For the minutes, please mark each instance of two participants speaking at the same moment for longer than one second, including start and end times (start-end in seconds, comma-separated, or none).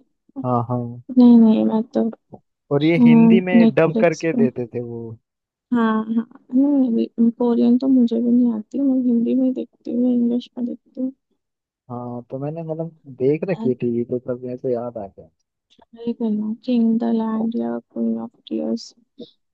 3.0-4.5